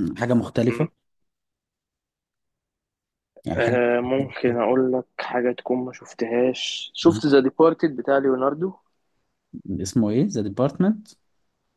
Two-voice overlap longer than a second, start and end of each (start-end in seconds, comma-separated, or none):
none